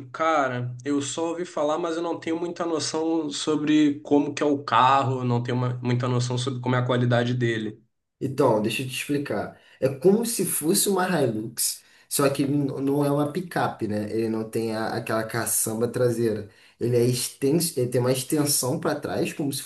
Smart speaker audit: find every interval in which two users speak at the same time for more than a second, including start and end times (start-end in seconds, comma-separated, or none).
none